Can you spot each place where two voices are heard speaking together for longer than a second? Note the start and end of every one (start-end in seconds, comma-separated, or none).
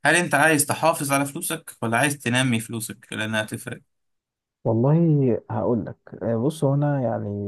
none